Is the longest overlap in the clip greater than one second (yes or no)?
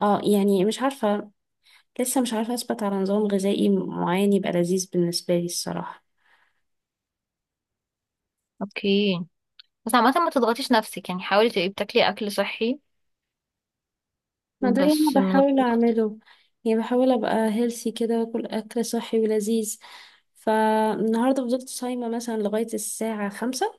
yes